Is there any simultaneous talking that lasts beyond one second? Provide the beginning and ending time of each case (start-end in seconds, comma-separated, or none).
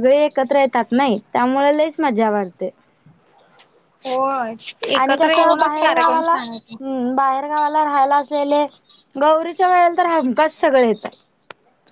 5.0-6.3